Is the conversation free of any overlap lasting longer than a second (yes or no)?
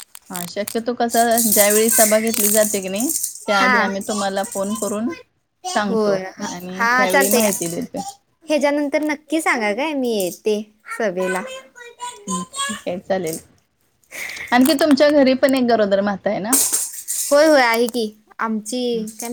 yes